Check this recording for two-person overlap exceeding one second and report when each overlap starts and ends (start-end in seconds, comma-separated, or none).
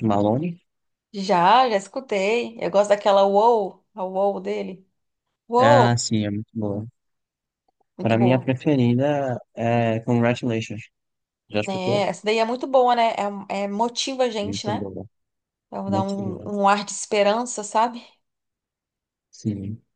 none